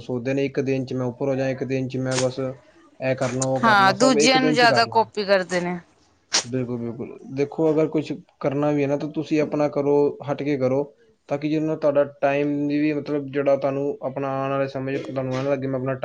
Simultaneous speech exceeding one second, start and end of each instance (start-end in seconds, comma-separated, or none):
3.6-5.0